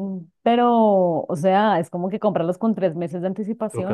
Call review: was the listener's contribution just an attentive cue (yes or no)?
no